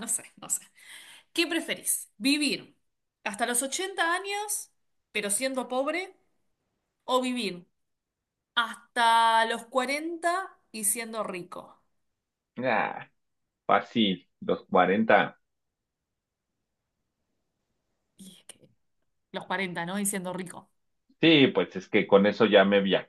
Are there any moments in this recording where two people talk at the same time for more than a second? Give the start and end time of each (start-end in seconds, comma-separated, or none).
none